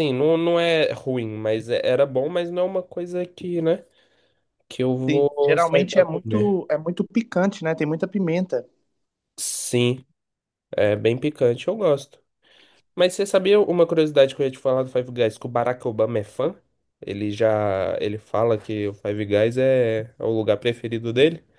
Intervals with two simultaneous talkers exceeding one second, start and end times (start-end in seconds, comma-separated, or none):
5.0-6.6